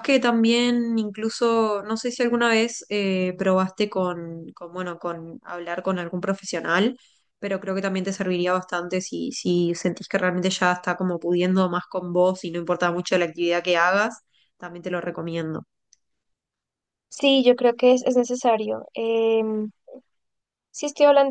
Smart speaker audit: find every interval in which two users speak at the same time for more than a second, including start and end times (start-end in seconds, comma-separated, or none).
none